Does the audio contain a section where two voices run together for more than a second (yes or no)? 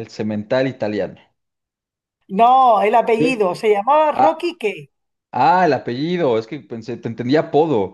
no